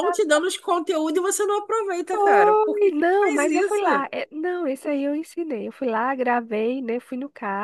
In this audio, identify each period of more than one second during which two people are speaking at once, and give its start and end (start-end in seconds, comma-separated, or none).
2.1-3.8